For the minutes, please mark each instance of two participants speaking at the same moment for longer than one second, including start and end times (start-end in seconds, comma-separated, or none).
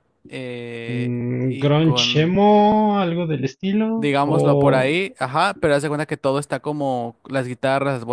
0.9-2.4